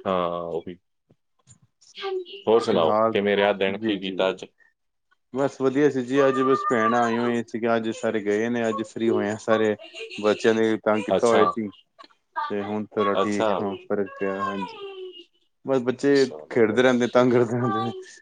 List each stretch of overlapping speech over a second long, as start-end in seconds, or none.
none